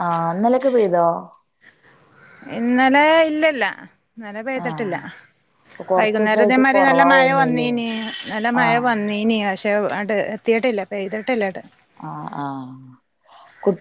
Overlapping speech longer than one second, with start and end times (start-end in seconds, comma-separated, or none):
6.0-7.7